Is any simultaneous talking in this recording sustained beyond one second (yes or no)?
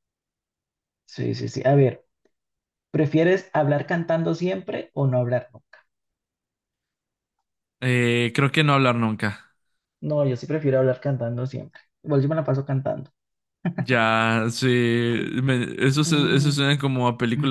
no